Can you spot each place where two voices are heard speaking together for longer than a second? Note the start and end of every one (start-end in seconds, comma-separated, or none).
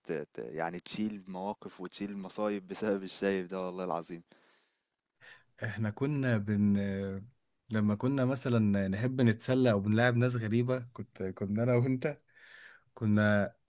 none